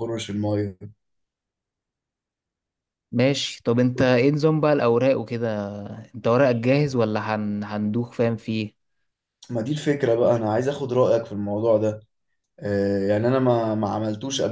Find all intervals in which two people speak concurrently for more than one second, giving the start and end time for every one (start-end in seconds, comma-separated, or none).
none